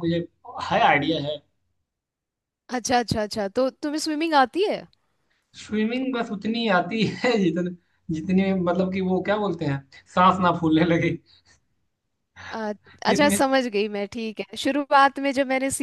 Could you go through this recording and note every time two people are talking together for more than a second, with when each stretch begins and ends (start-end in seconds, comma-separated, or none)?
none